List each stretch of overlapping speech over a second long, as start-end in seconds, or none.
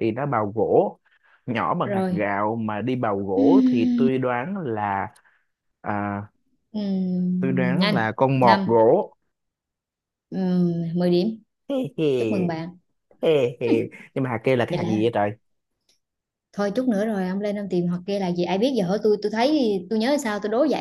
7.4-8.8